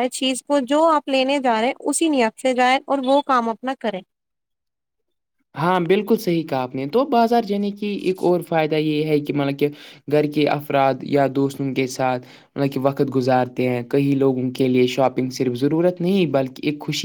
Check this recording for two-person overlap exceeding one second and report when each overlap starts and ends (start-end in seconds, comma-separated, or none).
none